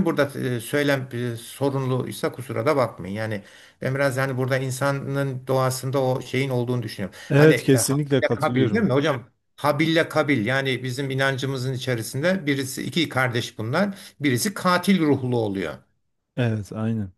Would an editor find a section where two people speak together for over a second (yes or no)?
yes